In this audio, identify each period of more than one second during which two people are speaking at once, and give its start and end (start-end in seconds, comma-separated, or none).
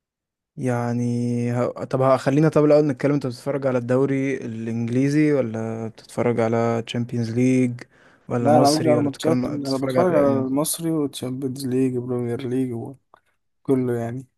8.4-10.4